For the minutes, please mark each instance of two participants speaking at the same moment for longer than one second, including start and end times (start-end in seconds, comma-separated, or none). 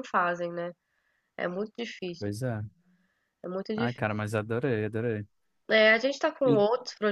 none